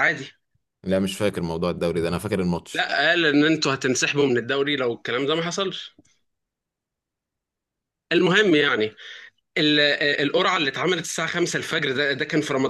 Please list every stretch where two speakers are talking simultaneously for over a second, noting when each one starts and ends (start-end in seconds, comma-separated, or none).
none